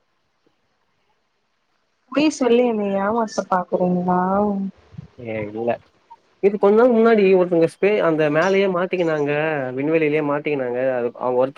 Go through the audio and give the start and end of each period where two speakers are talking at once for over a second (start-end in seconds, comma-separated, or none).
none